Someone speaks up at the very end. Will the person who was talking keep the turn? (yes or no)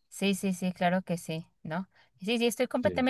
yes